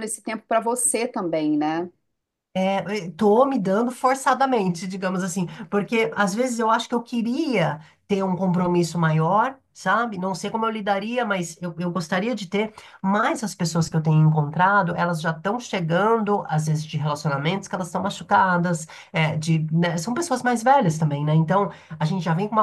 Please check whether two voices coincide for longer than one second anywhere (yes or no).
no